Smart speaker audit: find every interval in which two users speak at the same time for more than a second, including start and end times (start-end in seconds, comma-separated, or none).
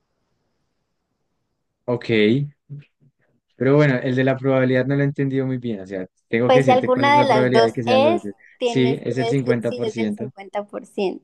6.4-10.3